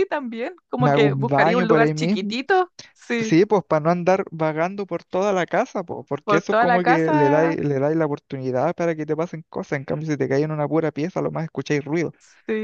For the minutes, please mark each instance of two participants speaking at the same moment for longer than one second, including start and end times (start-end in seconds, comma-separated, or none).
0.8-2.3, 6.2-7.6